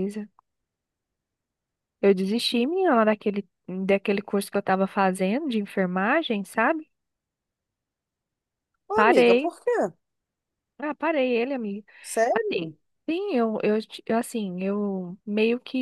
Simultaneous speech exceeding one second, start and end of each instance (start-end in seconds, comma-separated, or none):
none